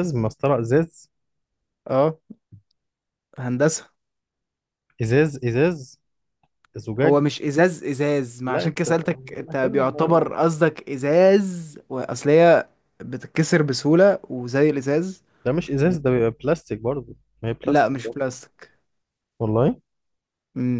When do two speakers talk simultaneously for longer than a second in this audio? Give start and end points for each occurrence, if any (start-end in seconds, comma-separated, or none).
8.5-10.3